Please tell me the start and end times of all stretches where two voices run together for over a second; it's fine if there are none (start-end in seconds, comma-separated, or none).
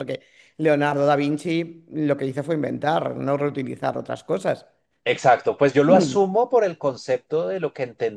none